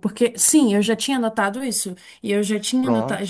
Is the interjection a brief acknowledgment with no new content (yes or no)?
yes